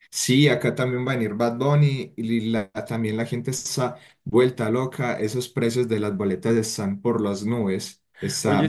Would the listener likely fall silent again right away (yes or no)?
yes